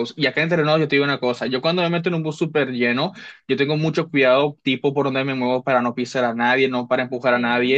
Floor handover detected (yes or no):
no